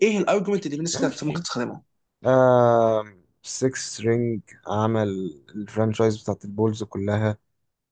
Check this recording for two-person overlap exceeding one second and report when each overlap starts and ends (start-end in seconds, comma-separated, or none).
none